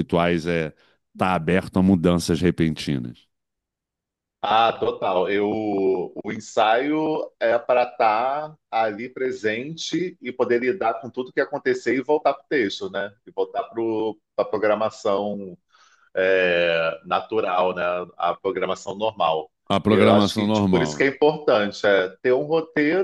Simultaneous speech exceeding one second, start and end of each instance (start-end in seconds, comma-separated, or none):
19.9-21.1